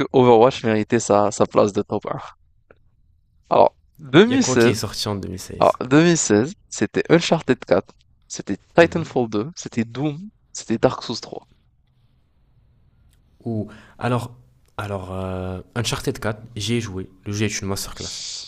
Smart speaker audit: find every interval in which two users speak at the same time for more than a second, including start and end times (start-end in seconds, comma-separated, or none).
none